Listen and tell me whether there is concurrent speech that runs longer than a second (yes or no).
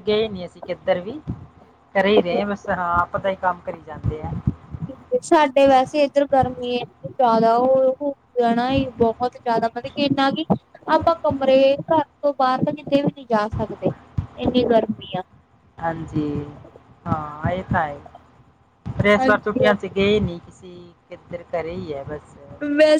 no